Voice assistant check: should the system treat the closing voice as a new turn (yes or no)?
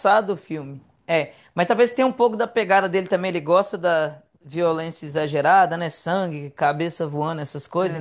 no